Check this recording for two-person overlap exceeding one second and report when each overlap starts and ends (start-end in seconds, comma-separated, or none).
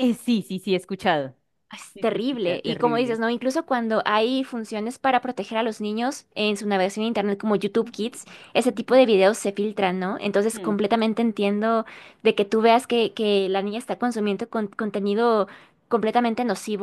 1.9-3.2